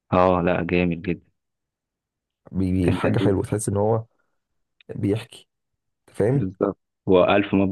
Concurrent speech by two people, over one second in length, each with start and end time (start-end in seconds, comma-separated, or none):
none